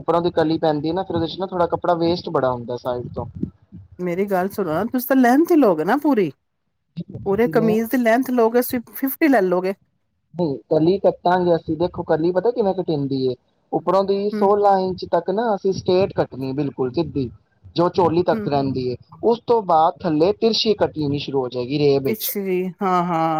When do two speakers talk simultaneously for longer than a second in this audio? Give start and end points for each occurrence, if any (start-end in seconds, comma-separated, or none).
none